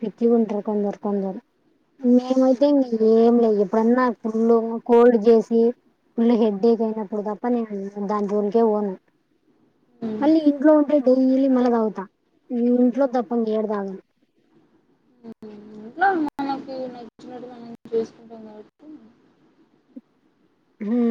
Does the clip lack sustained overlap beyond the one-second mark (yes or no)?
yes